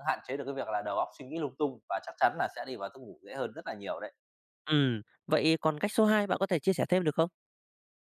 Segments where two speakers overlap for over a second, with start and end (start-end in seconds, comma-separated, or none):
none